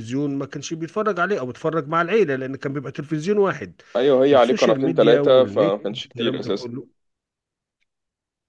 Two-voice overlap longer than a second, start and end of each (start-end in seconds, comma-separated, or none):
4.3-6.7